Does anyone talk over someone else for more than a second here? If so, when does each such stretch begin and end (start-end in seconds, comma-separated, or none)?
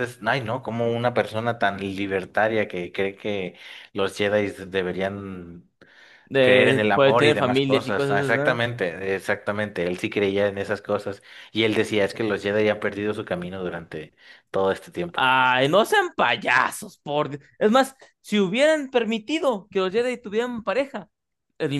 6.4-8.6